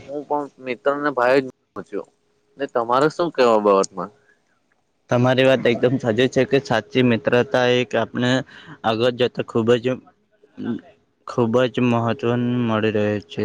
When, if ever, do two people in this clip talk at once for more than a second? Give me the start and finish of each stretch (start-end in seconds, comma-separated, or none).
none